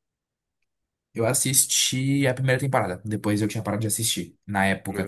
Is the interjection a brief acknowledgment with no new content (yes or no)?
yes